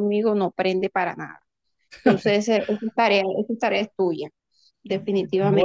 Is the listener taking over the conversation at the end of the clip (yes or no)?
yes